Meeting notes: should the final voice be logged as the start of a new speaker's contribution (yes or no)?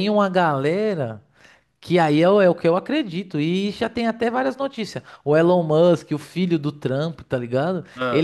no